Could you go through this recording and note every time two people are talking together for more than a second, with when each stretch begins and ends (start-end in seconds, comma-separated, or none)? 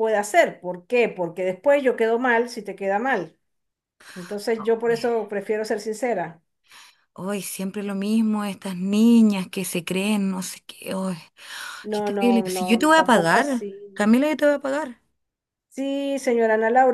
11.9-14.2